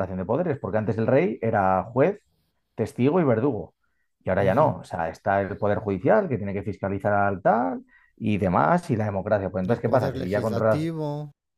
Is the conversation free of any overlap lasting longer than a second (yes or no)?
no